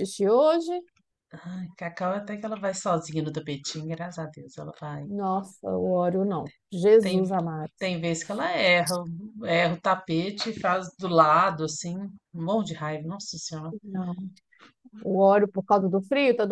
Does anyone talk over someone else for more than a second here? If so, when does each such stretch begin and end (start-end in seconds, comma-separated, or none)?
none